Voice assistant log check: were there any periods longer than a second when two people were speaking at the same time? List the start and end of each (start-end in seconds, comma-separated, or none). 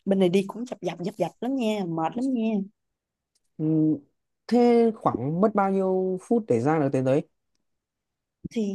none